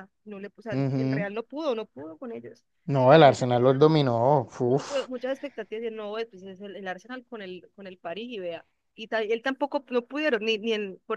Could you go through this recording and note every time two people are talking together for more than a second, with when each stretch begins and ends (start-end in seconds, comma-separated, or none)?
none